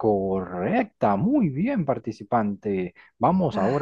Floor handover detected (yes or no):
no